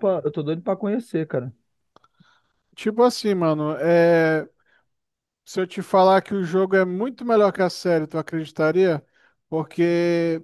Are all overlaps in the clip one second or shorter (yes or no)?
yes